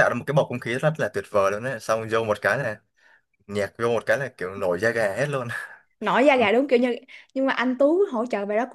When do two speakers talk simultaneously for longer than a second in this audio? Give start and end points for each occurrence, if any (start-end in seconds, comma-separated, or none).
none